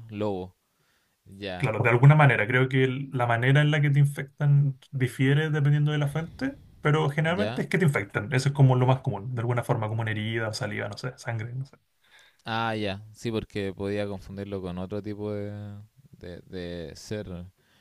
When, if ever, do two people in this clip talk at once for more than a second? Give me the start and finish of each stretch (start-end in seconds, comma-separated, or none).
none